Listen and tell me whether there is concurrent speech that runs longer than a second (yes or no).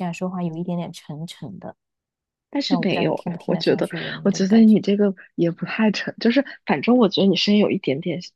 yes